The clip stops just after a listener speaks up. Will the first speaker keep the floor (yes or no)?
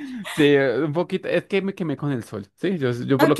no